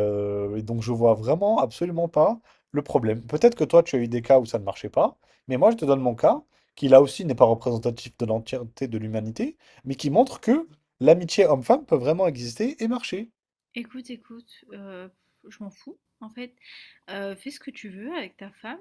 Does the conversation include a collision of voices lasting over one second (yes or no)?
no